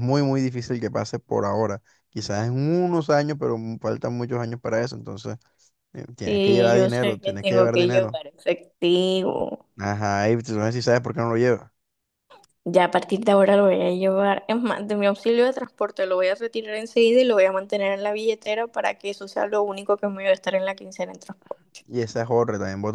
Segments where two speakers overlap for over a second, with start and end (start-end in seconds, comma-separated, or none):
6.2-8.2